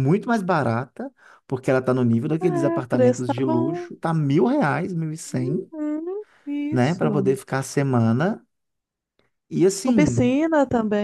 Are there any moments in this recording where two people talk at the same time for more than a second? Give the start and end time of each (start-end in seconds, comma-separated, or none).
2.4-3.9